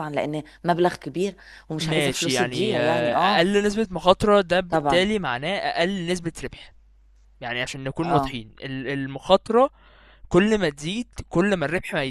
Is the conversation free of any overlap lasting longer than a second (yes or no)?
no